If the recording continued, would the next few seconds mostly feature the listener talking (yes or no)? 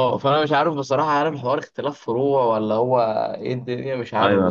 yes